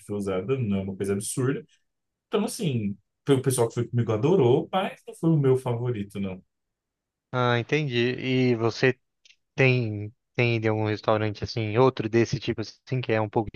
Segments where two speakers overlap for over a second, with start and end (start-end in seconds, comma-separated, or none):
none